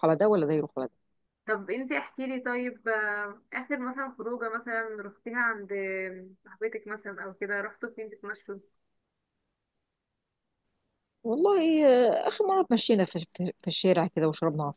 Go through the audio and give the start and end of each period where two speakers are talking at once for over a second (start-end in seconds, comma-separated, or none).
none